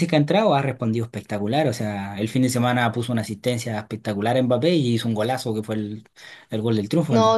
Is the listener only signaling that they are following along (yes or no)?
no